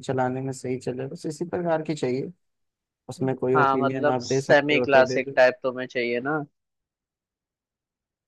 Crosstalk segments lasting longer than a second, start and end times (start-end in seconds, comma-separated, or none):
3.5-5.4